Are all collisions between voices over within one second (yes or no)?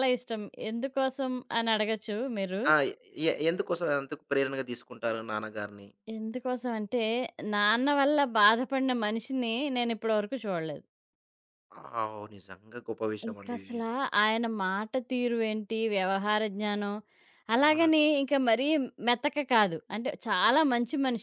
yes